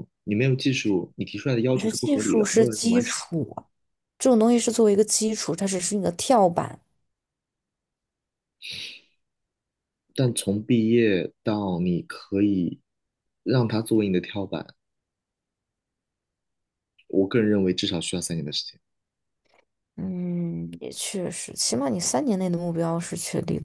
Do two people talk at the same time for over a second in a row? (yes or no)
yes